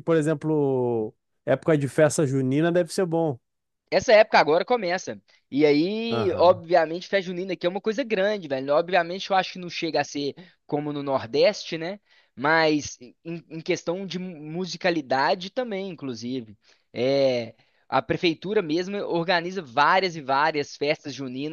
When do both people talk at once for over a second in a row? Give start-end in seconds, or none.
none